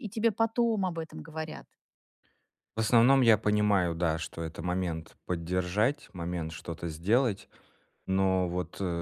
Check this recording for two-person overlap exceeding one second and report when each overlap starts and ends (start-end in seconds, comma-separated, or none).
none